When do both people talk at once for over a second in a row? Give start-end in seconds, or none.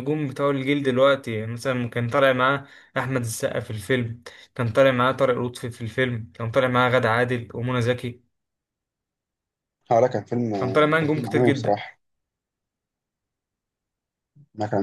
10.5-11.8